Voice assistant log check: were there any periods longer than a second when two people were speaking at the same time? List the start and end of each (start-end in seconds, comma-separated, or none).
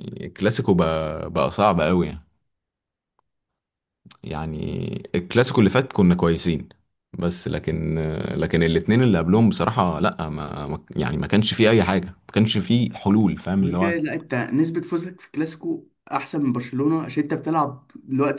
none